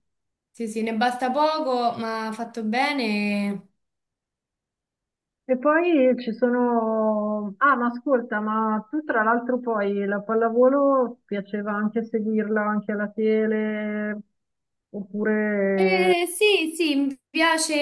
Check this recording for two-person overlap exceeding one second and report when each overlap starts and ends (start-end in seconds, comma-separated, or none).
none